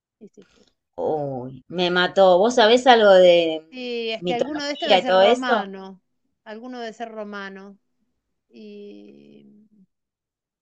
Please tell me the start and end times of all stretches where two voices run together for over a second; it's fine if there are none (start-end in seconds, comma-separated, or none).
4.2-5.7